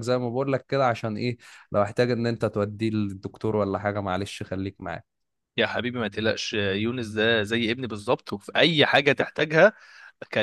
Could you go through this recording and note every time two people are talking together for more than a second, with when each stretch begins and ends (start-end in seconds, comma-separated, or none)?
none